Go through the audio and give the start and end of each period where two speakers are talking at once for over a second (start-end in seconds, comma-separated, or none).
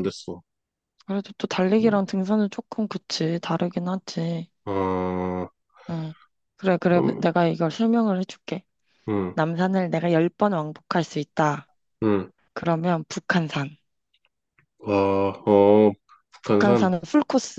none